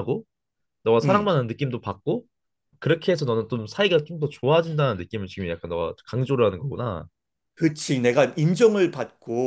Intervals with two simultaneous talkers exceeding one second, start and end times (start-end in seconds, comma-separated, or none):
none